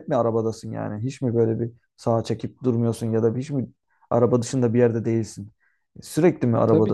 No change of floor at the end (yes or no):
no